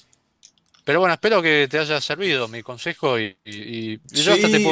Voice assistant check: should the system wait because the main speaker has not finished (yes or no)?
no